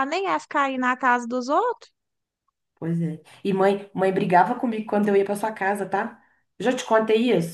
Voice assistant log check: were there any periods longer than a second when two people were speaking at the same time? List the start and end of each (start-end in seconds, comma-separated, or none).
none